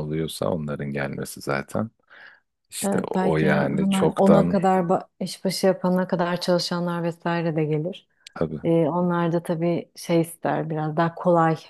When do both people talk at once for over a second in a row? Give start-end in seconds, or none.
2.9-4.6